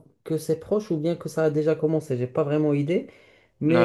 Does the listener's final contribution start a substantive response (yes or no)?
yes